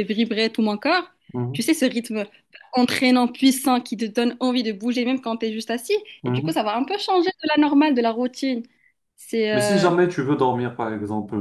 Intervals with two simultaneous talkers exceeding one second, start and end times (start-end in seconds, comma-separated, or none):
none